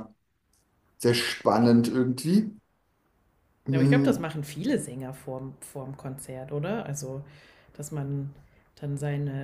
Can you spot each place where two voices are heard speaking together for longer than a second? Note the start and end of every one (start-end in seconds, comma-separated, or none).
none